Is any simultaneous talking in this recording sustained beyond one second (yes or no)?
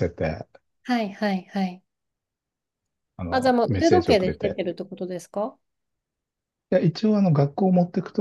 yes